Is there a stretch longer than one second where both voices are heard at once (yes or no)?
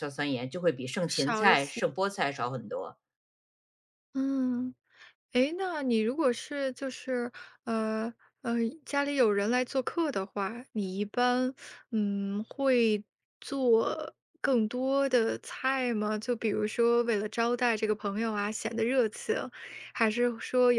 no